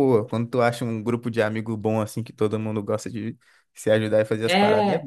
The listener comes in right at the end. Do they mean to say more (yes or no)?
yes